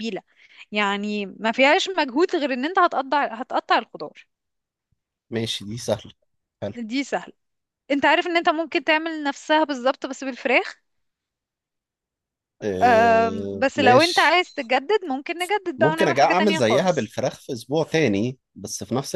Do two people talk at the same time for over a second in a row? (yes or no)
yes